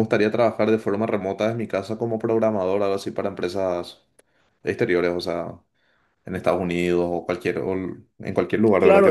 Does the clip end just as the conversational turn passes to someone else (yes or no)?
yes